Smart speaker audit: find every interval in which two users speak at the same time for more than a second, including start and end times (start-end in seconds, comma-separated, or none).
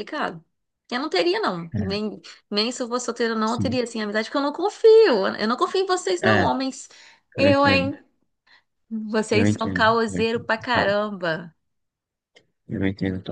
9.3-10.9